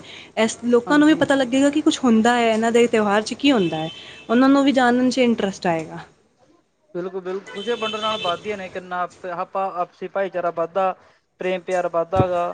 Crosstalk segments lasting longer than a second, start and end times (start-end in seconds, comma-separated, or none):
none